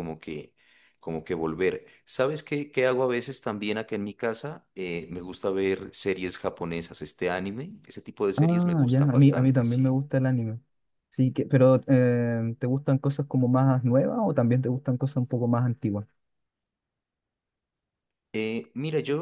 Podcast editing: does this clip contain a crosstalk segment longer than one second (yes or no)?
yes